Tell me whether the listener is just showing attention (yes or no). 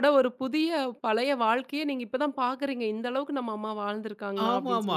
no